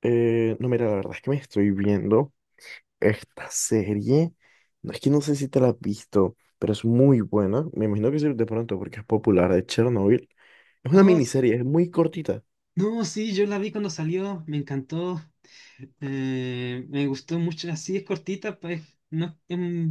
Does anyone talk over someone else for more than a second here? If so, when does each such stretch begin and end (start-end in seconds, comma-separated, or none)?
none